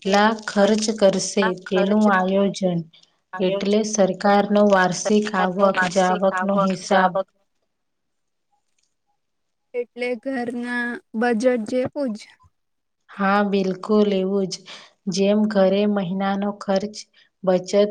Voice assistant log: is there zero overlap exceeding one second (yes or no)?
no